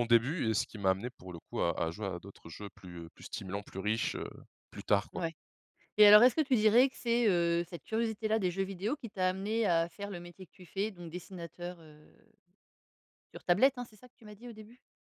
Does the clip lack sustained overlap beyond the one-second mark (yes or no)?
yes